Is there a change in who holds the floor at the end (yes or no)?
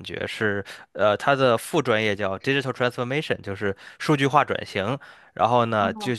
no